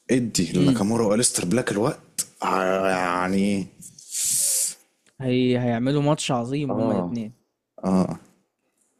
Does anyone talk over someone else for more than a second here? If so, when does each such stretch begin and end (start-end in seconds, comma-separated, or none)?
none